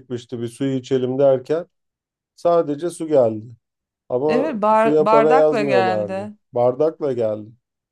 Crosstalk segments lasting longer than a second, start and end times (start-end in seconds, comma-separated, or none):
4.3-6.3